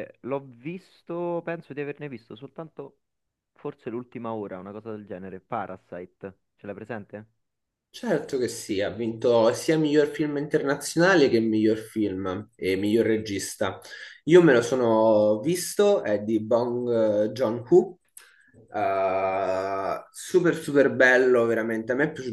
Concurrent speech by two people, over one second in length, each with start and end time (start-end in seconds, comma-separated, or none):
none